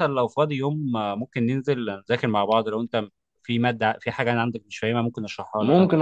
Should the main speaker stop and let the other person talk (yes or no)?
yes